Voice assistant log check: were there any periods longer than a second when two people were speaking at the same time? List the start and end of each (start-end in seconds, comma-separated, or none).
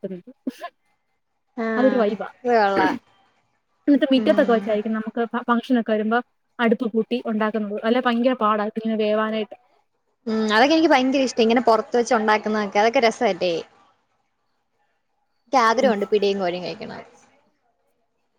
none